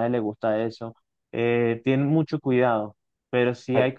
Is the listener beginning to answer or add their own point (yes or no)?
no